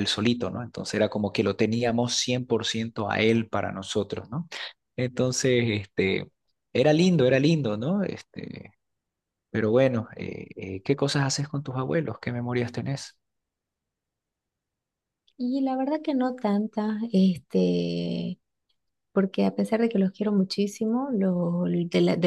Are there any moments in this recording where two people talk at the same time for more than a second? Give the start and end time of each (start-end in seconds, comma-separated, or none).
none